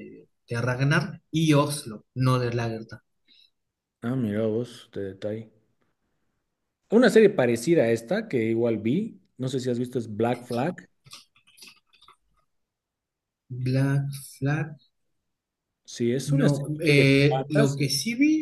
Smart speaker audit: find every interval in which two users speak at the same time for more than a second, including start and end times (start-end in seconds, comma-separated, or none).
16.2-17.8